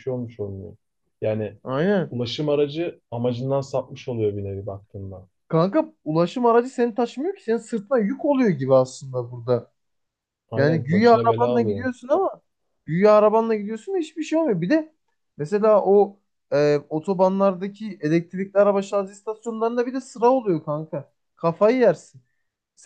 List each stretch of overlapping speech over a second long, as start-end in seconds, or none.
10.6-11.9